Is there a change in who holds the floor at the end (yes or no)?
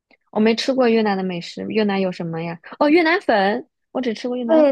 yes